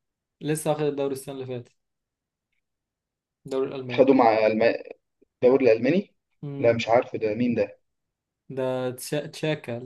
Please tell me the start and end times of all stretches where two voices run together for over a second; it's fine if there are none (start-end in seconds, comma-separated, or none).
none